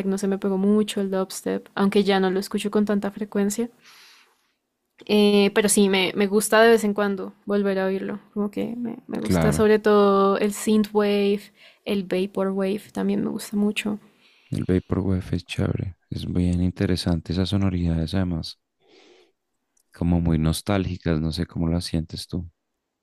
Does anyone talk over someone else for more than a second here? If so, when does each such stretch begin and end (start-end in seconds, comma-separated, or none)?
none